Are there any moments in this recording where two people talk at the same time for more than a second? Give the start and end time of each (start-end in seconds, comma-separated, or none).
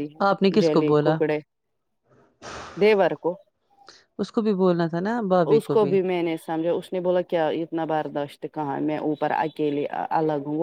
none